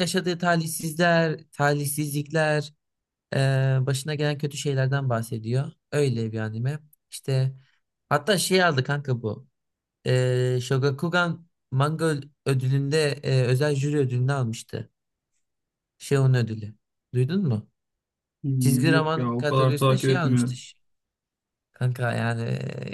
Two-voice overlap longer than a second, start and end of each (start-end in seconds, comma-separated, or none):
18.6-20.6